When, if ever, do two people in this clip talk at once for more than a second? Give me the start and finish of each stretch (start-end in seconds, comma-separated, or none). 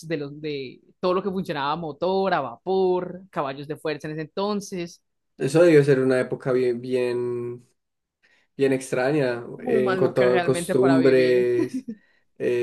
9.6-11.5